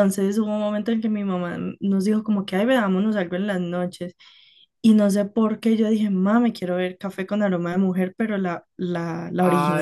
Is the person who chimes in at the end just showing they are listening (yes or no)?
no